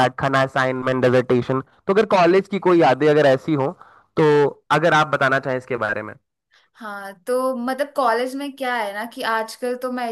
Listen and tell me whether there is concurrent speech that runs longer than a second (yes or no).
no